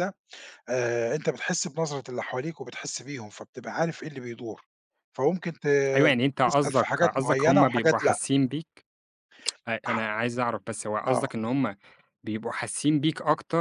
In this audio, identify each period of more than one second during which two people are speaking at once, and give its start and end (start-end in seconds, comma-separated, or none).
6.4-8.2